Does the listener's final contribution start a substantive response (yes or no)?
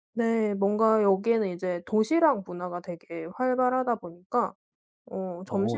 no